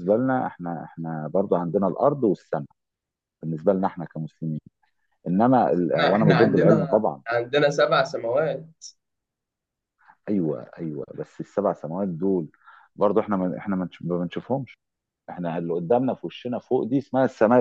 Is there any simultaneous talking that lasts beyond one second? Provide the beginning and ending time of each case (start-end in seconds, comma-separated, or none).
5.8-7.2